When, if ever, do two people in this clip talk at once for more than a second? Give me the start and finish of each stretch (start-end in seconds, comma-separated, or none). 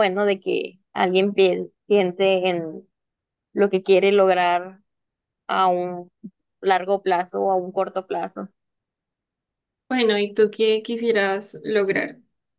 none